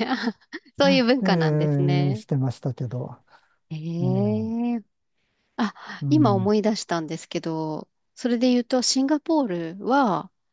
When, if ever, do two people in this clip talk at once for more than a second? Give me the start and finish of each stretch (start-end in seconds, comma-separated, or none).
none